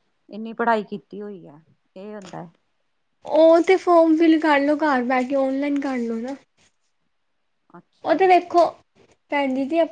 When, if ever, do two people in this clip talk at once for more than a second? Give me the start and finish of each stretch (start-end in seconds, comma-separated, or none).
none